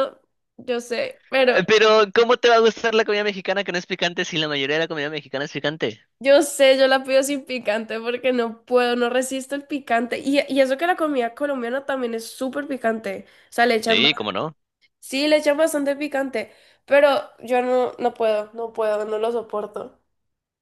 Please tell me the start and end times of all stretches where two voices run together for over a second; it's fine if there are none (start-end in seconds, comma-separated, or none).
none